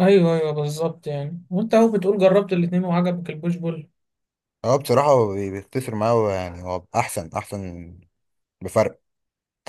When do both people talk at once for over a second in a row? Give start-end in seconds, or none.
none